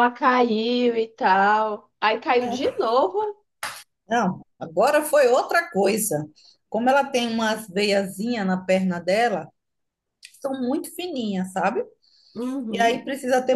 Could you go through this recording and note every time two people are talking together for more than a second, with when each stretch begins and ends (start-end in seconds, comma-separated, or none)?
none